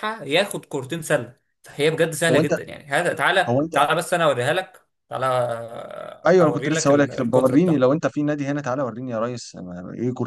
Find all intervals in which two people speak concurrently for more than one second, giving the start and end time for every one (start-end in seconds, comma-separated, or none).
6.3-8.0